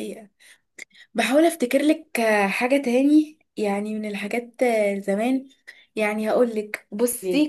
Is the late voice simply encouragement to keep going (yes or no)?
yes